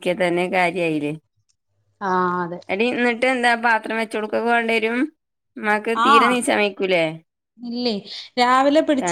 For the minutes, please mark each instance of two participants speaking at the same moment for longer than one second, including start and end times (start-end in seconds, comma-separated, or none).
none